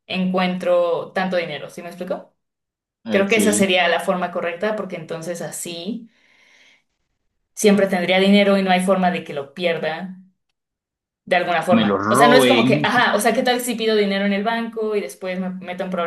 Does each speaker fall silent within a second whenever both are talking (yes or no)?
no